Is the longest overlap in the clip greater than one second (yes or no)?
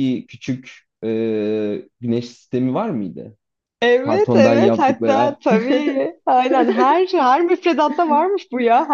yes